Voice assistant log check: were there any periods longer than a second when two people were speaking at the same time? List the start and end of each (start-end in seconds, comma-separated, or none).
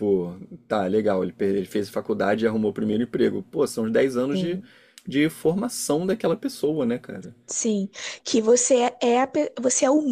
none